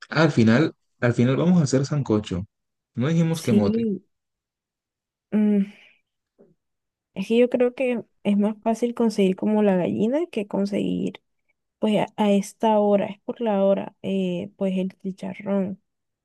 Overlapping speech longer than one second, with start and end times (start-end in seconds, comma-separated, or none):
none